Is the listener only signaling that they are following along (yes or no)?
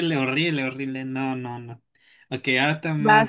yes